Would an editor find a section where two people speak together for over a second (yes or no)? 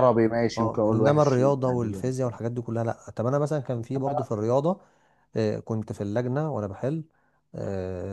yes